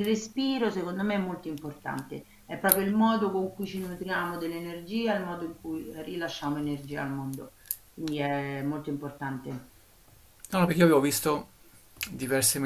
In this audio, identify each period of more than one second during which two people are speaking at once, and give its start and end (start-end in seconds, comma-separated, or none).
none